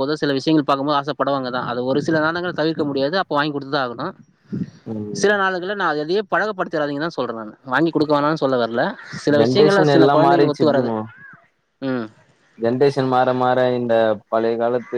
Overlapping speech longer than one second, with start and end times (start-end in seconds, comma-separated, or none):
9.4-10.9